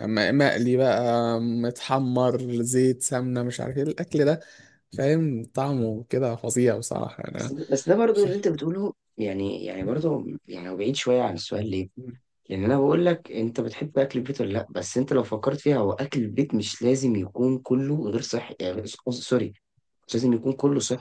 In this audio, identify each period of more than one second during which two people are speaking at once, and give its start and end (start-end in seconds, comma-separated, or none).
none